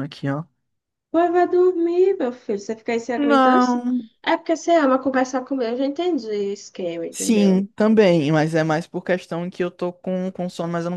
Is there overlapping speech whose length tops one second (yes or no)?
no